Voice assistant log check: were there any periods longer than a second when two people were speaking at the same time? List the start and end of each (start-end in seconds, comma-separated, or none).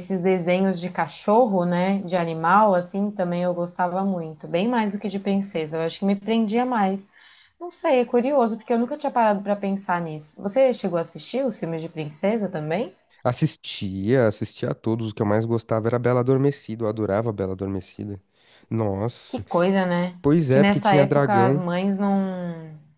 20.2-21.6